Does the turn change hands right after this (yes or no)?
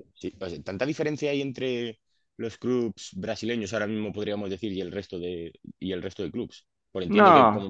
no